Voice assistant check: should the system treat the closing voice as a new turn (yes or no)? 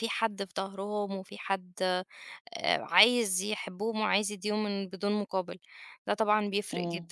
yes